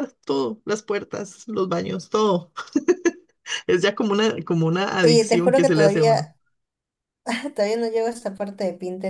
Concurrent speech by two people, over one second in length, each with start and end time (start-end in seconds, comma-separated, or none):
5.0-6.3